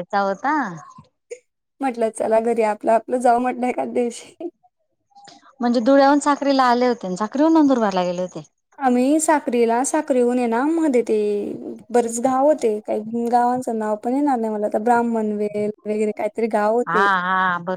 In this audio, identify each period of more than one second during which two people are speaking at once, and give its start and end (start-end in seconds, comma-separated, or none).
none